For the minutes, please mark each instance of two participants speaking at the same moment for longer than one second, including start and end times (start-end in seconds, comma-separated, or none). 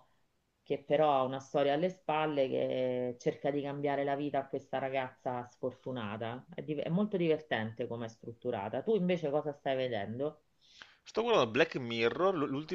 none